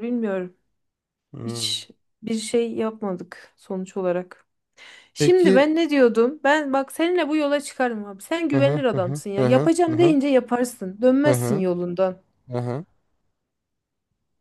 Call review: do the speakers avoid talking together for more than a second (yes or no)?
no